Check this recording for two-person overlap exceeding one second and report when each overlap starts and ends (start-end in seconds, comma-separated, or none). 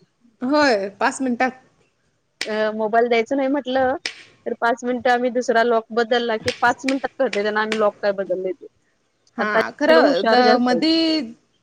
9.4-11.0